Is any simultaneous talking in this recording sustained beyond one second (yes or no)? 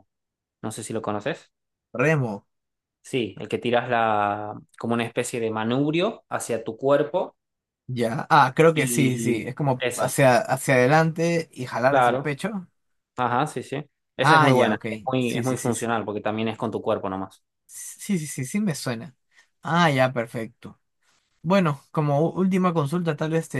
yes